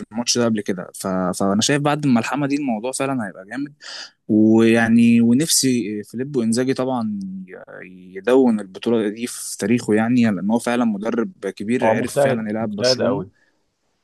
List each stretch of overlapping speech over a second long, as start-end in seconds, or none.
11.8-13.2